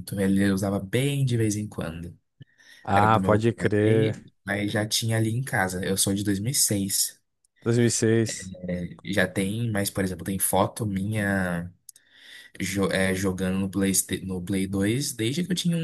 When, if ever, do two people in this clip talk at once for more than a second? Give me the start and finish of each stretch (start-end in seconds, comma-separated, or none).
2.9-4.1